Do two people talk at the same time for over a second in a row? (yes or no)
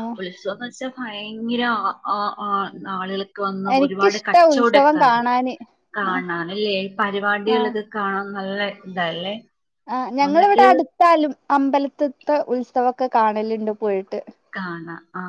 yes